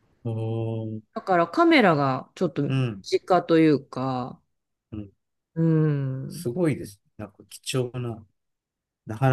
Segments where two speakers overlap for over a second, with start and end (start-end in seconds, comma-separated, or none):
none